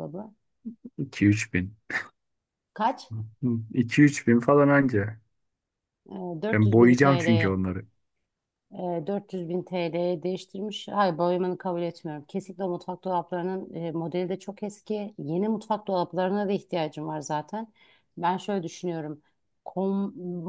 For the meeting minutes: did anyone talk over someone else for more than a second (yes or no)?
yes